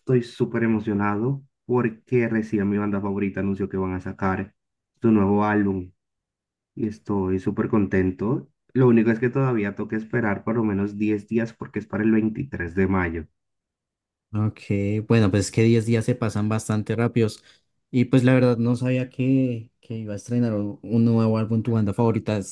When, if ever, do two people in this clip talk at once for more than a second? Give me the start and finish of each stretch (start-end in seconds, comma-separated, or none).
none